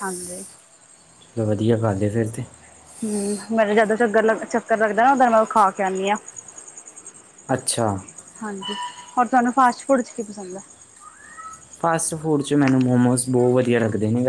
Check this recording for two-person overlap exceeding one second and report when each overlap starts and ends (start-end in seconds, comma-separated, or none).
none